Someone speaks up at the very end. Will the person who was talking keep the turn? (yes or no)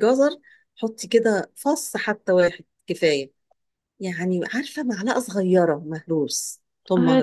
no